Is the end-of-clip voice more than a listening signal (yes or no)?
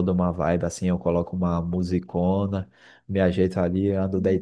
no